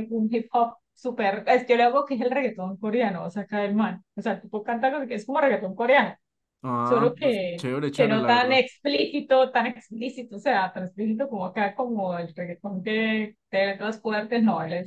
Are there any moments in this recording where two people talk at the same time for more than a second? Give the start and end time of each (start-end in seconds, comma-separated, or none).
6.8-8.6